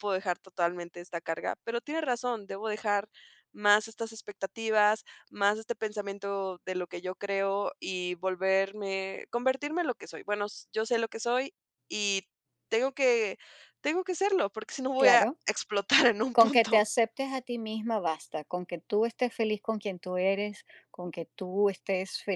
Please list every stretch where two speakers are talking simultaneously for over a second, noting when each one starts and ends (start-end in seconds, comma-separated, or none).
none